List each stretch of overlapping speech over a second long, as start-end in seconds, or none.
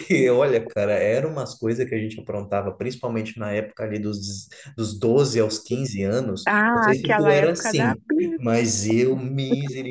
6.5-8.0